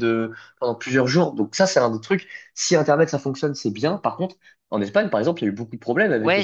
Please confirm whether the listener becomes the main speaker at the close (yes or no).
yes